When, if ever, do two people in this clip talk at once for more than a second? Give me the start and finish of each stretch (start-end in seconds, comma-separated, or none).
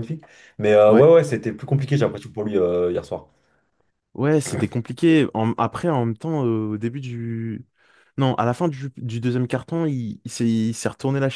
none